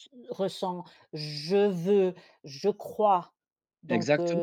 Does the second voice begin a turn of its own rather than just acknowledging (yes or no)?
no